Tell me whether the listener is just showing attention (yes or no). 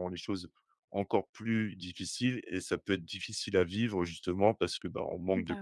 yes